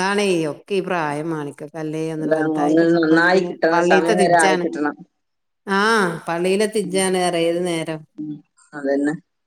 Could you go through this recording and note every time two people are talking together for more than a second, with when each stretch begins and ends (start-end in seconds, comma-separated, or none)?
2.2-4.7